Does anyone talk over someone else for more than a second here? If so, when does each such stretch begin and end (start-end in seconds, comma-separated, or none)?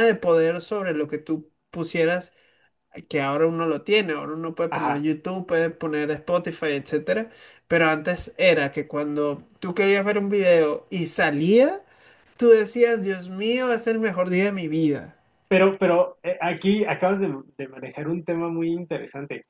none